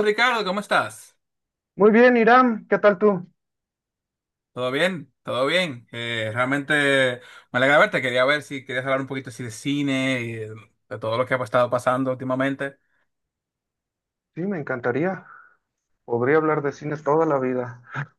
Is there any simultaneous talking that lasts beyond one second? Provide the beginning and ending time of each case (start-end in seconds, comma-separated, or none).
none